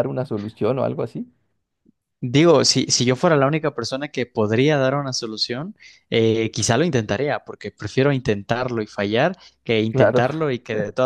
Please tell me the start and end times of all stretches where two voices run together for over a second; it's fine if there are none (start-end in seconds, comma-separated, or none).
none